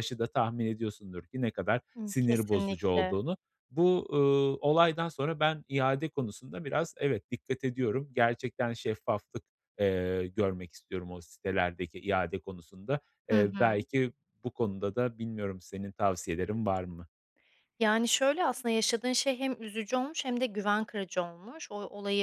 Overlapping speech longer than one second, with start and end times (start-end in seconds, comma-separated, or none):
2.0-3.2